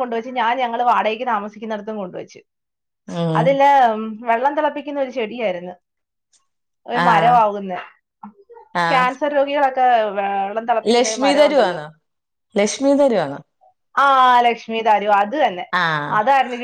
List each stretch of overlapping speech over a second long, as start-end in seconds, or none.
none